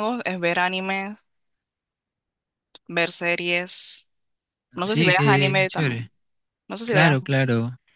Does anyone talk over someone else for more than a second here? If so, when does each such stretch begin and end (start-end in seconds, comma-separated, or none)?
4.8-6.1